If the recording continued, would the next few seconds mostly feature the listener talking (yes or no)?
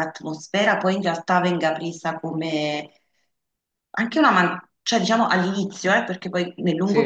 no